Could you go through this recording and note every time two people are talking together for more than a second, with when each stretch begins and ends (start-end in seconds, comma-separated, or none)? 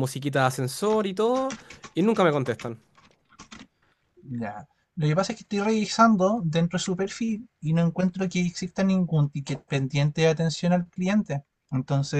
none